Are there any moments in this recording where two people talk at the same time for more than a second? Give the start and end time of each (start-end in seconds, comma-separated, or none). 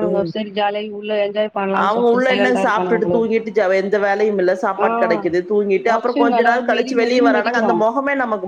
1.8-3.4, 5.9-7.7